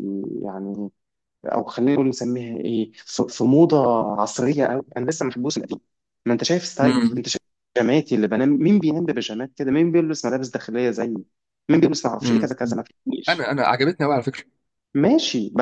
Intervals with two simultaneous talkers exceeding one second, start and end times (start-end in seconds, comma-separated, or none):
none